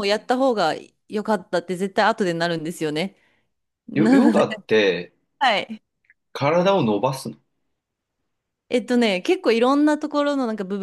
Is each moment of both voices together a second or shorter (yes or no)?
yes